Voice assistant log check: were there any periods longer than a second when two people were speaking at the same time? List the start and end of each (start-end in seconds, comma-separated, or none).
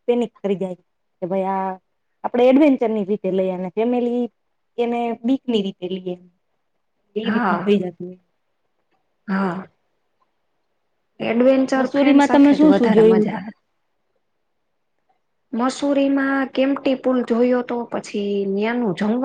11.8-13.4